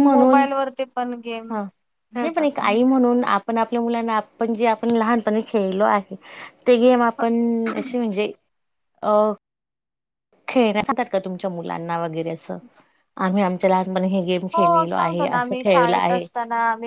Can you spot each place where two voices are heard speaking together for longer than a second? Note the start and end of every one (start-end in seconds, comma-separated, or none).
14.5-16.2